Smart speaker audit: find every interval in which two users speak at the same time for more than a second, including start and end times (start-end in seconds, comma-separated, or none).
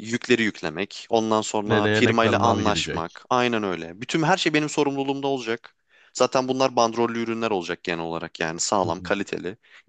1.7-3.2